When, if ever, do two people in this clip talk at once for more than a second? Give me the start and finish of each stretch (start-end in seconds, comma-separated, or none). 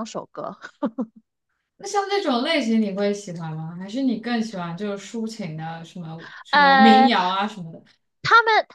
none